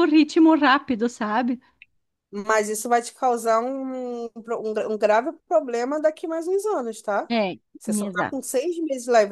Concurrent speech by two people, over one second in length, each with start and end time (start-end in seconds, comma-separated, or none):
none